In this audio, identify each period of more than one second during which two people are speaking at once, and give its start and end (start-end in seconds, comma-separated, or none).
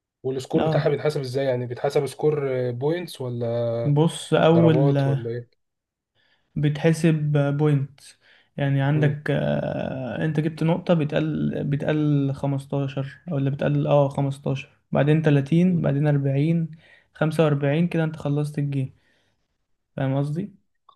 none